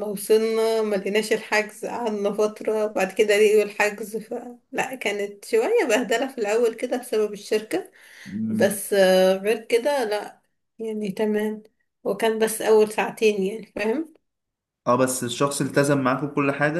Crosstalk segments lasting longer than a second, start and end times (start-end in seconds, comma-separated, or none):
none